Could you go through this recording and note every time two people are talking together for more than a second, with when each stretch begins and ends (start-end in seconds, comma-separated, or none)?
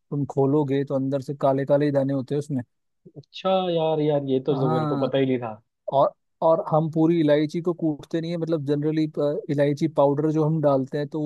none